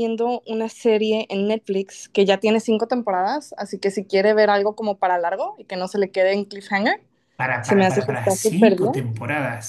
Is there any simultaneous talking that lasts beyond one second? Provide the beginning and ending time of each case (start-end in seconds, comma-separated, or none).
7.6-9.0